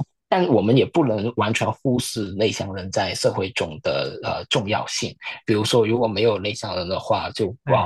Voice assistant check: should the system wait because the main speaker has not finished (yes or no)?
yes